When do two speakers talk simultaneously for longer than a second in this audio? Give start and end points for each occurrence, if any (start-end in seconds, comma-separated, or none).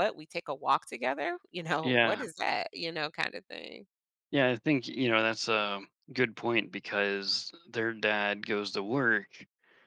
none